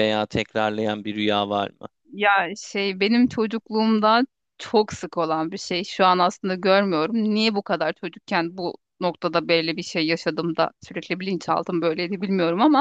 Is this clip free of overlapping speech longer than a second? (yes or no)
yes